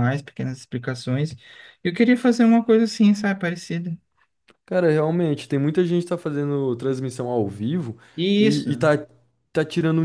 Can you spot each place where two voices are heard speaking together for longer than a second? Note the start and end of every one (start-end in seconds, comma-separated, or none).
none